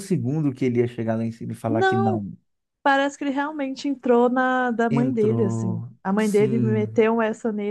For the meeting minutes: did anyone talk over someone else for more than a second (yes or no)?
yes